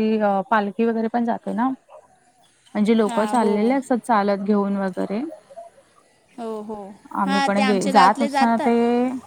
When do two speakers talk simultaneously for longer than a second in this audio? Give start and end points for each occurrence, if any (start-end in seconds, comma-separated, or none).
7.2-8.7